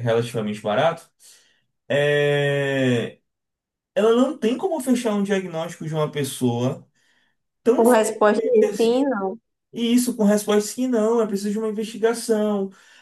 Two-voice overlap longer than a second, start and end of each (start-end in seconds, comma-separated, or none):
7.8-9.1